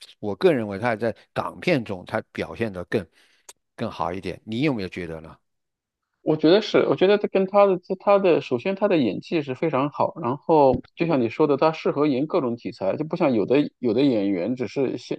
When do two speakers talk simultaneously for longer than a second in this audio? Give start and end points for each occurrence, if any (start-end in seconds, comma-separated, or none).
none